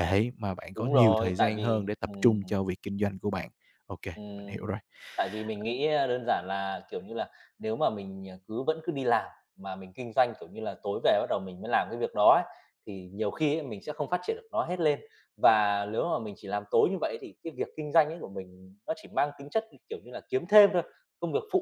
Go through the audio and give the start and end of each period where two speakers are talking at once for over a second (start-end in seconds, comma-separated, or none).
0.8-2.4